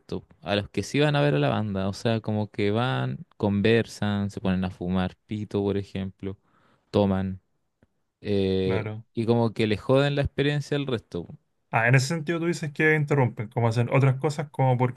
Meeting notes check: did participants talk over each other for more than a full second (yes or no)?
no